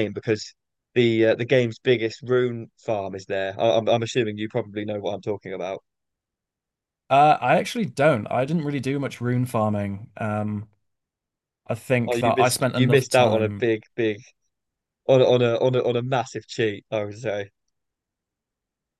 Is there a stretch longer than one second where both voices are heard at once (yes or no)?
yes